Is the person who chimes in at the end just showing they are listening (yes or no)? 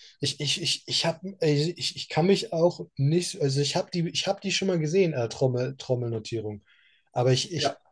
yes